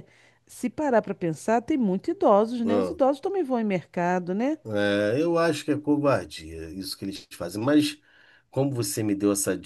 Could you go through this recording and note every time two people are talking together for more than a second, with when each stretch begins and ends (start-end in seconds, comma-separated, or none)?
none